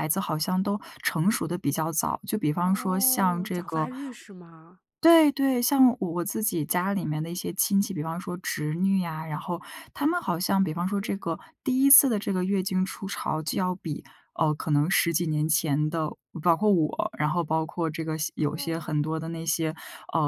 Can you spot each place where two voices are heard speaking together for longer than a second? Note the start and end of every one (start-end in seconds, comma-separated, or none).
2.6-3.9